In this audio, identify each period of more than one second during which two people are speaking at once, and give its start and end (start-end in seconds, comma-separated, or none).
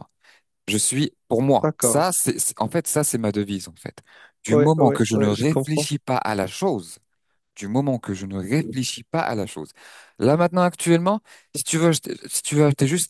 4.5-5.9